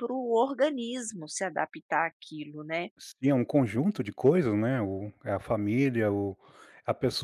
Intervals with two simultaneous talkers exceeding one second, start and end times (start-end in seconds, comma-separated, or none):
none